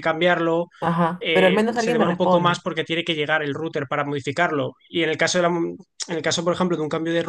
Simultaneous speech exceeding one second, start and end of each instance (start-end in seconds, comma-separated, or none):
1.2-2.6